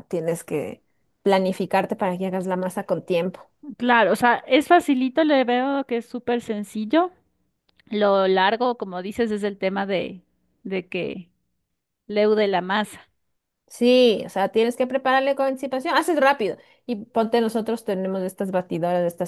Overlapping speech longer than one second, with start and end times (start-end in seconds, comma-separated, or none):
none